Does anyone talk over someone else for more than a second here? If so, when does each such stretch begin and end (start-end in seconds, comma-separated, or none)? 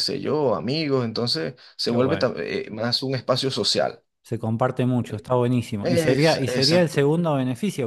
5.9-7.1